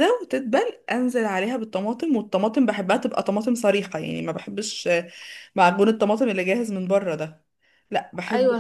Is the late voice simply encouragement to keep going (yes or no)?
yes